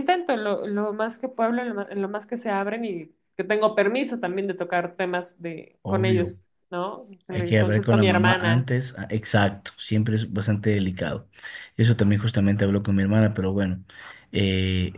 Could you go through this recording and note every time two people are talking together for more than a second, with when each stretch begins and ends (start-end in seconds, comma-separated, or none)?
7.3-8.7